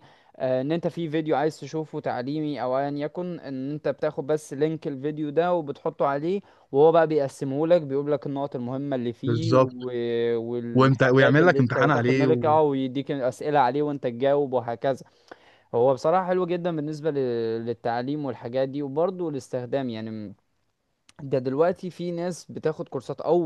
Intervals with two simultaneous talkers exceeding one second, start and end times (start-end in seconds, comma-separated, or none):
10.7-12.3